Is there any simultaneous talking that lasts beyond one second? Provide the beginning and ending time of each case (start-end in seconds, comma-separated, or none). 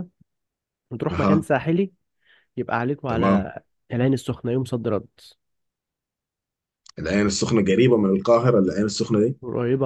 none